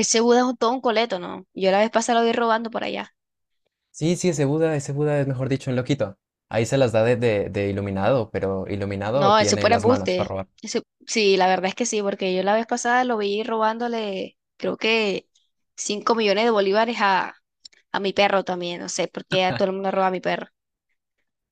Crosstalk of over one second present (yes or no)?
yes